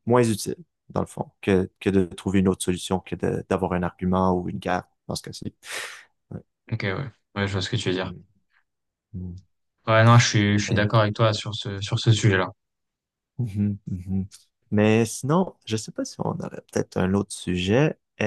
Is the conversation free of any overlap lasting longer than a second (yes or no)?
yes